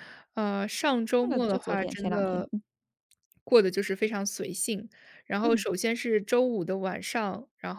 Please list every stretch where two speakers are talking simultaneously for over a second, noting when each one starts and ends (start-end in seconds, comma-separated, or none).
1.2-2.5